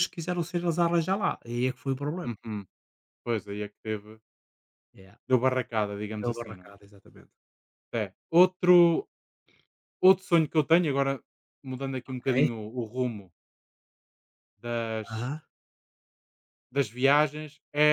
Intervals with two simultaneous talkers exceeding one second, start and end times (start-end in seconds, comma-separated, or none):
none